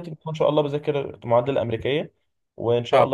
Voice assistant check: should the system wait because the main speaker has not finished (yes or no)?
yes